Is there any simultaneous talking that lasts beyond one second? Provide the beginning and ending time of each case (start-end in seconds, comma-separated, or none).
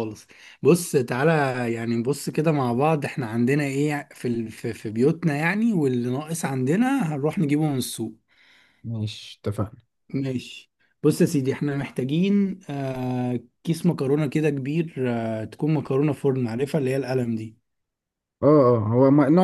none